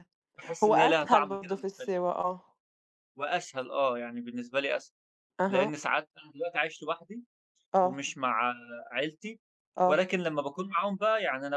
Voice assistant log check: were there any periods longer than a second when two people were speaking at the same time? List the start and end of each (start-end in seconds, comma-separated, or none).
0.6-2.0